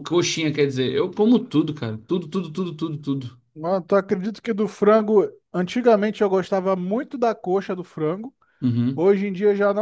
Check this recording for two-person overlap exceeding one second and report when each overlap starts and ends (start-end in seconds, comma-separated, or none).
none